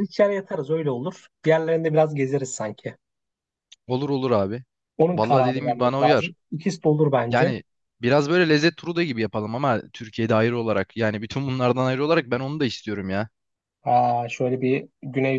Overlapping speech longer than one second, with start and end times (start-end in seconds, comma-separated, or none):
5.1-6.3